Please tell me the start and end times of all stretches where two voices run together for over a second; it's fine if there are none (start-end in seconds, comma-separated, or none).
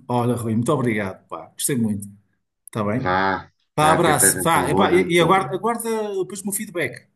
3.7-5.5